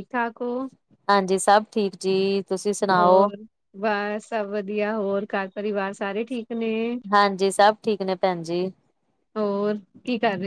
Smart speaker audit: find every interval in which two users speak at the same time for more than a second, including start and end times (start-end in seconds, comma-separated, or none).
none